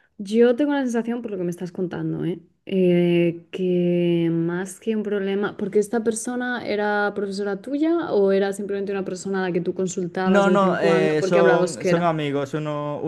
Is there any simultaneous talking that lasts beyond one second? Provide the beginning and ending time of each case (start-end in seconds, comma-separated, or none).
10.2-12.1